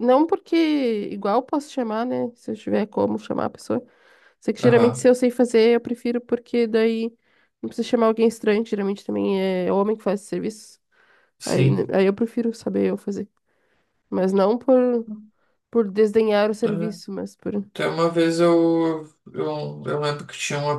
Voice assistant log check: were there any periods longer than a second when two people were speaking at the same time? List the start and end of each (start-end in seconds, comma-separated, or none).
none